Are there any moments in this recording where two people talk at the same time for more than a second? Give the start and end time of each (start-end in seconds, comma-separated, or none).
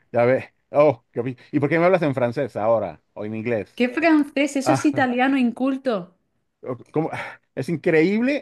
none